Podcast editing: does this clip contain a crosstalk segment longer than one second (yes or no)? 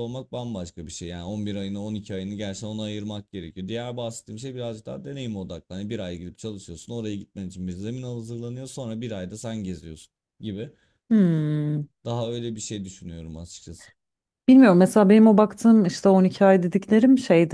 no